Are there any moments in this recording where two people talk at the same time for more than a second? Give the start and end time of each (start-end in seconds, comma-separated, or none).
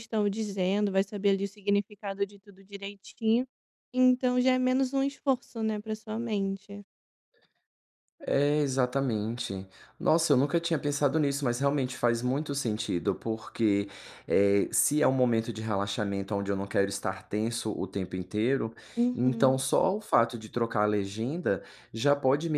none